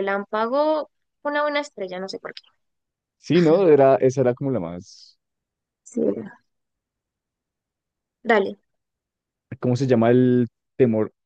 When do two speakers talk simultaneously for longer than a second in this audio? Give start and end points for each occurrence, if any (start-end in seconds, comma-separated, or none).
none